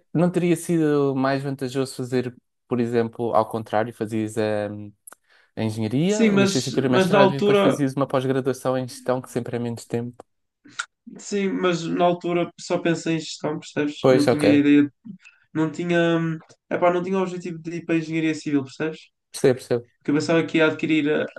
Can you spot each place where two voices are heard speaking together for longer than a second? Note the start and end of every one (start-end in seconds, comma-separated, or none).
6.1-7.8